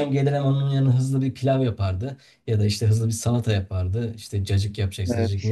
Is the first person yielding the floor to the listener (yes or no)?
no